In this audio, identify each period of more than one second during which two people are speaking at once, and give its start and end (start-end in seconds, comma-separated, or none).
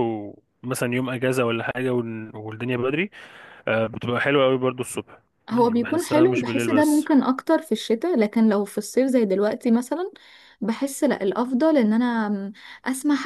5.5-7.1